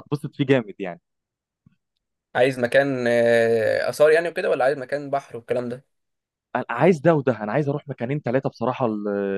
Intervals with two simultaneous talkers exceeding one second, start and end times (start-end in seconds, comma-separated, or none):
none